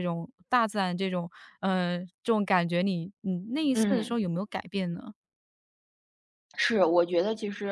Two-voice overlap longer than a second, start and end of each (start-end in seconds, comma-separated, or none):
none